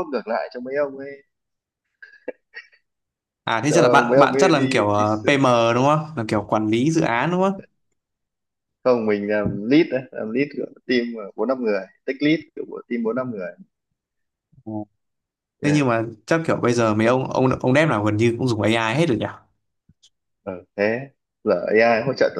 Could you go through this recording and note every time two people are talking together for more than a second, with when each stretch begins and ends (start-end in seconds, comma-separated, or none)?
3.7-5.0